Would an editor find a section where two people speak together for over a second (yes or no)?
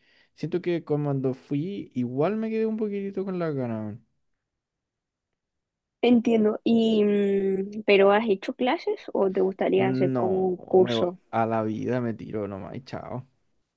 yes